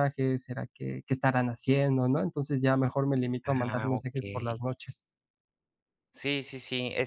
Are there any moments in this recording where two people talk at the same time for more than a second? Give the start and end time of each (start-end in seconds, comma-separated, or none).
none